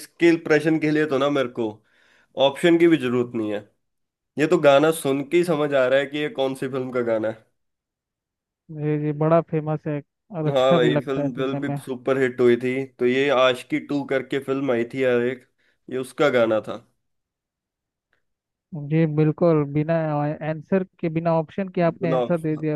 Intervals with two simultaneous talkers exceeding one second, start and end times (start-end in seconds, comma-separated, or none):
10.4-11.8